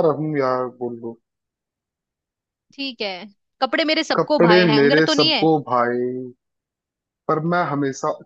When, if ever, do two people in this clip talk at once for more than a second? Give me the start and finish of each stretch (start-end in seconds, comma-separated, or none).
4.1-5.5